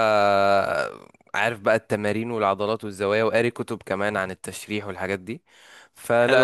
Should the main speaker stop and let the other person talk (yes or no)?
no